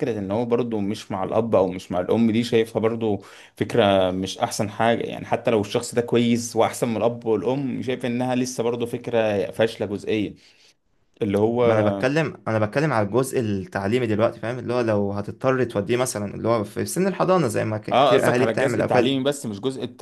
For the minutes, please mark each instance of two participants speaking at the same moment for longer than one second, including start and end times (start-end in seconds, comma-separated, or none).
17.9-19.1